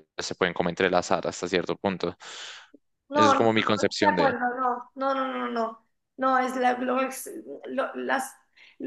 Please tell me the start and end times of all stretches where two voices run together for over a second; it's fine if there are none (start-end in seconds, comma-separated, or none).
3.1-4.4